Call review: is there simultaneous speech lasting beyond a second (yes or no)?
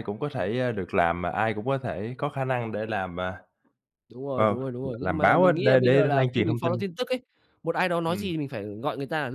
yes